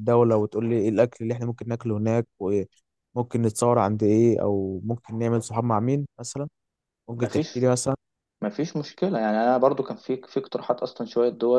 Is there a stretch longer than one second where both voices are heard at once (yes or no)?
no